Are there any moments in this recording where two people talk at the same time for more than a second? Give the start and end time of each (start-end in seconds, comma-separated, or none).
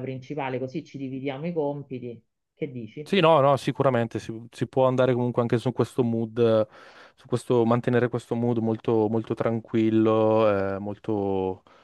none